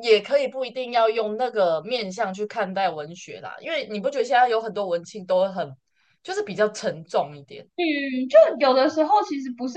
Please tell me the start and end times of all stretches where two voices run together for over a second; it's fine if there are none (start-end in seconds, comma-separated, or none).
none